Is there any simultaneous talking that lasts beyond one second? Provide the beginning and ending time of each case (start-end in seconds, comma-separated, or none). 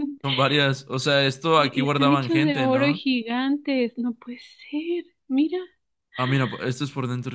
1.6-3.0